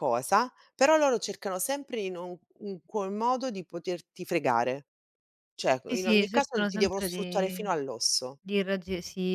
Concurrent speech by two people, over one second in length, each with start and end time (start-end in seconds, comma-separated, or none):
5.9-7.7